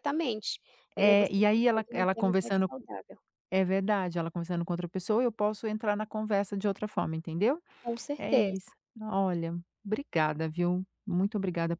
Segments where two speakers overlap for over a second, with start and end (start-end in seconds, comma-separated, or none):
0.9-2.7